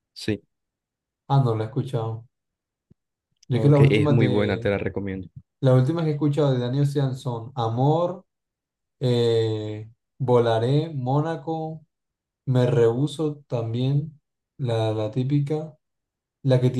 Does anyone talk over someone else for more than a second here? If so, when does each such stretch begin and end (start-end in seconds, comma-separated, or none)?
3.5-4.7